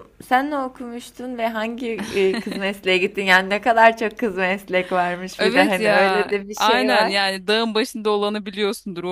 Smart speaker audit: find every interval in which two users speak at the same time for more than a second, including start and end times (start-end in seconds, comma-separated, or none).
5.4-7.1